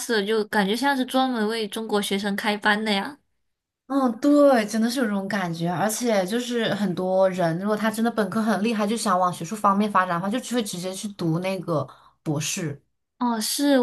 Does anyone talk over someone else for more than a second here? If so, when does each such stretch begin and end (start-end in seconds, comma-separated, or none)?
none